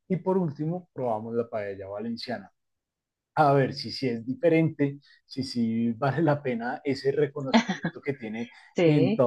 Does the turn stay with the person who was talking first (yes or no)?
yes